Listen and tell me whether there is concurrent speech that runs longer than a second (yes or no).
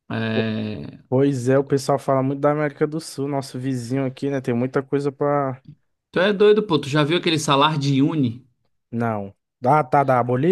no